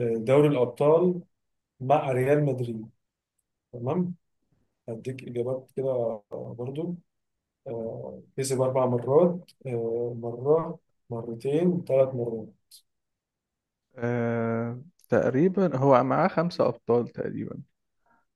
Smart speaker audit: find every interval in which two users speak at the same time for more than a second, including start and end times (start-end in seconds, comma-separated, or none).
none